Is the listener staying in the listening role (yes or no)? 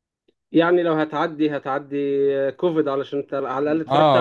no